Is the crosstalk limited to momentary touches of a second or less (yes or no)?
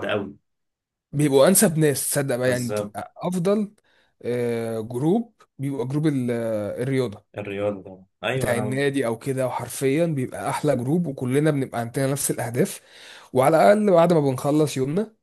yes